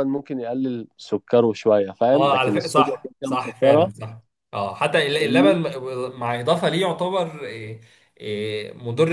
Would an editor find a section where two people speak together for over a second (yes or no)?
yes